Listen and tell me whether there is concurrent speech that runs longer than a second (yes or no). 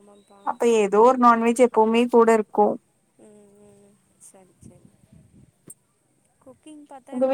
no